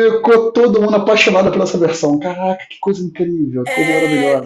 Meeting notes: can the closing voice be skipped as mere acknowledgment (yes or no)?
no